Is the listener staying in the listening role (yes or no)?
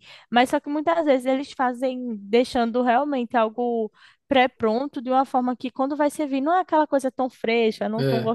yes